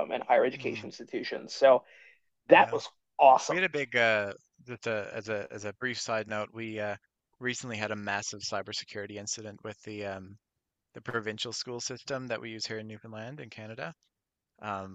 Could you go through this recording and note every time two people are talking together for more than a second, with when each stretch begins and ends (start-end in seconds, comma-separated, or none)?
none